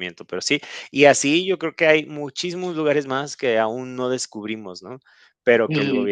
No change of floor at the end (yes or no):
yes